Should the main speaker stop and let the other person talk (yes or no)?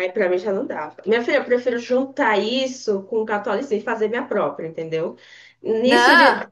no